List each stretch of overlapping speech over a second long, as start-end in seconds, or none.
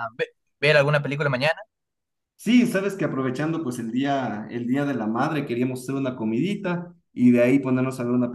none